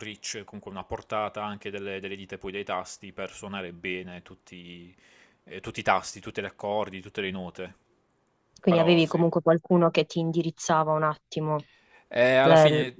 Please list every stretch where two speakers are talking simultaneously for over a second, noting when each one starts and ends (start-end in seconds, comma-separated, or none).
none